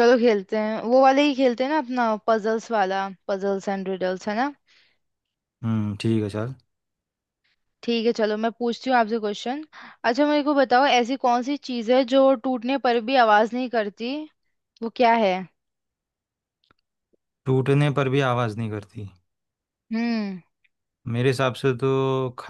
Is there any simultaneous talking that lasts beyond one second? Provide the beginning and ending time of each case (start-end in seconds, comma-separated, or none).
none